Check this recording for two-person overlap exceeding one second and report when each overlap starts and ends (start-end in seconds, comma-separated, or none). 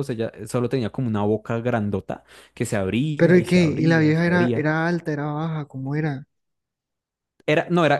3.2-4.7